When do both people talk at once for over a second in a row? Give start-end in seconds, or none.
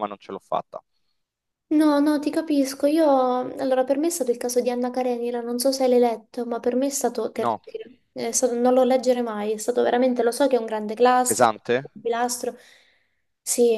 none